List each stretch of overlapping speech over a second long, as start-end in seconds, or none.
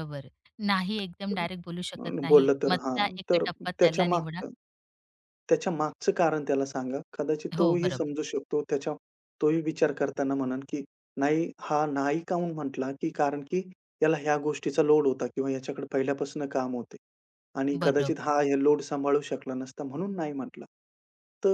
1.3-4.4